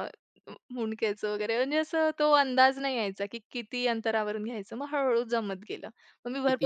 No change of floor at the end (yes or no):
yes